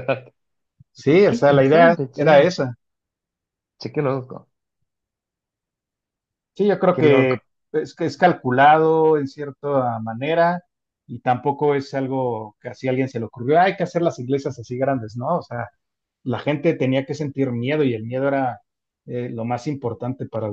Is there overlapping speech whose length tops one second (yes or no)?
yes